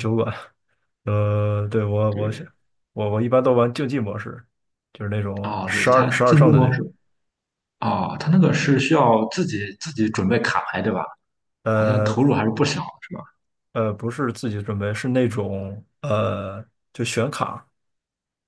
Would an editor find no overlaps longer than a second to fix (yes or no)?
no